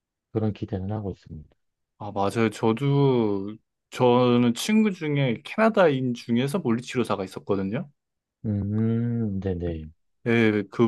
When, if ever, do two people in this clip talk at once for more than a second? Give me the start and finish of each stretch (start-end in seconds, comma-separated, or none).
none